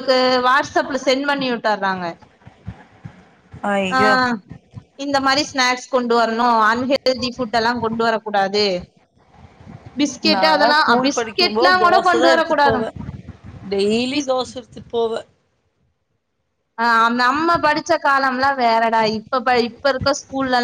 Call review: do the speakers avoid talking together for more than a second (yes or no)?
no